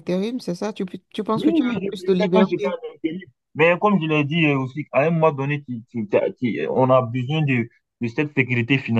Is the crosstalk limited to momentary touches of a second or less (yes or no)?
no